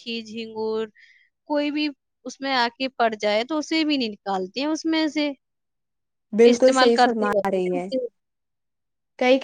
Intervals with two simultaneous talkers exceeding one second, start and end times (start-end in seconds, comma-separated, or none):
6.5-7.9